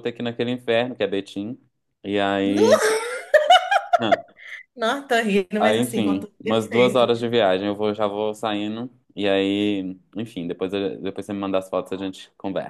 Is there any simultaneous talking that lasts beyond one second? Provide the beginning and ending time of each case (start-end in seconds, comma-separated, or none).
5.6-7.1